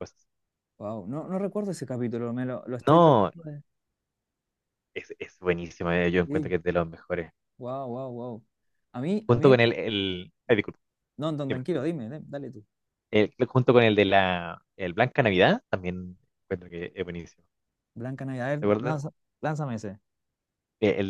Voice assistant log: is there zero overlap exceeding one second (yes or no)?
yes